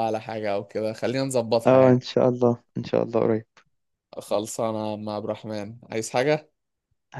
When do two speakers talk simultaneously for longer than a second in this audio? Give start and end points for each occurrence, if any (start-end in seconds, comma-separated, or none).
none